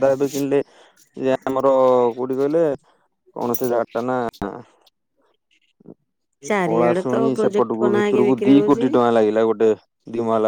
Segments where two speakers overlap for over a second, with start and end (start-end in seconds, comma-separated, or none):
6.7-8.9